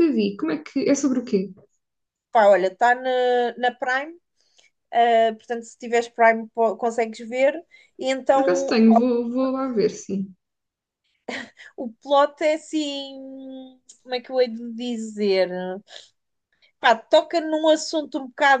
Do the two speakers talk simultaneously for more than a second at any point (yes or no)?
no